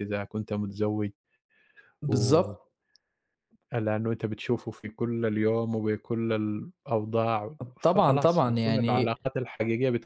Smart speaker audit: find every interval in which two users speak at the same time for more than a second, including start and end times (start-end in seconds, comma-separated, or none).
7.8-9.2